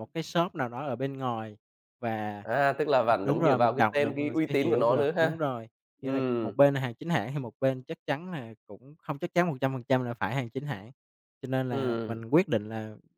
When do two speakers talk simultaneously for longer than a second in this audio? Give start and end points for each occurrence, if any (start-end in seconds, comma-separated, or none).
3.2-5.4